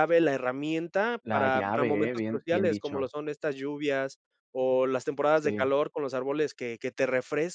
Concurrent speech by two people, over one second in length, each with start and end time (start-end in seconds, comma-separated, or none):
1.2-3.1